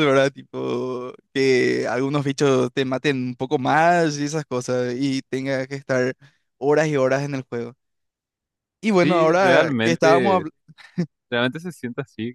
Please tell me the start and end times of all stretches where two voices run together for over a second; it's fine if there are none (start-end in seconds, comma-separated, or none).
9.0-10.4